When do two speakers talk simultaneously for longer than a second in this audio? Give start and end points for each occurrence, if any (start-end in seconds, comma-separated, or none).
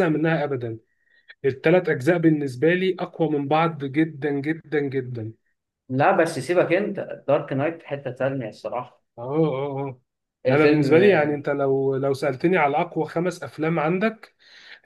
none